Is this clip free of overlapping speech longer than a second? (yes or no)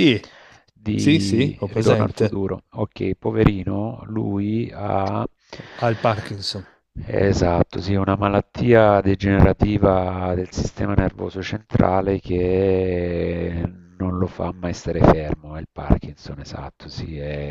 no